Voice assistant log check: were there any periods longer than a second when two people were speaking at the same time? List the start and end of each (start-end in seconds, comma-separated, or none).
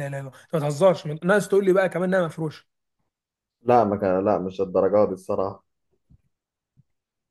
none